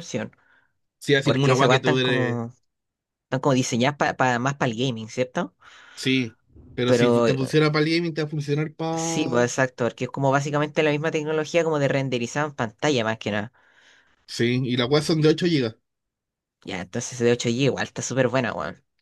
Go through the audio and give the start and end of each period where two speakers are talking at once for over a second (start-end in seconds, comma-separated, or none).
1.2-2.4